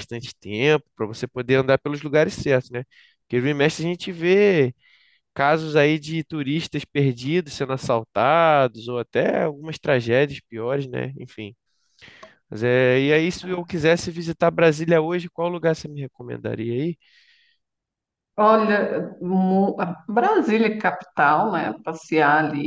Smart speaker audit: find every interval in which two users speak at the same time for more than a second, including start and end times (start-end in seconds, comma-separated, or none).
none